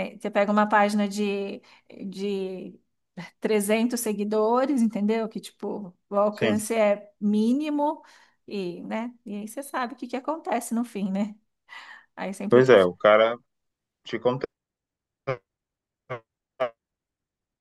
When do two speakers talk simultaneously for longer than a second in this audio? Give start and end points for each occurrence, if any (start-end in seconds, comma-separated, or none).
none